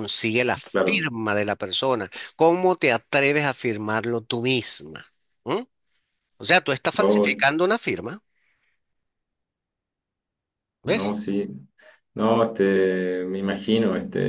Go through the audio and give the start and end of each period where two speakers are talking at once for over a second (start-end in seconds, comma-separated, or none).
none